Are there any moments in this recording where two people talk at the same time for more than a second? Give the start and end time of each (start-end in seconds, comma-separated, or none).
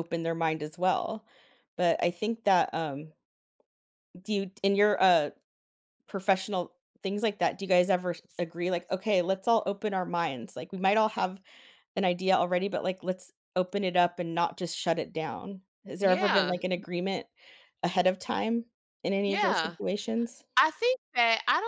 none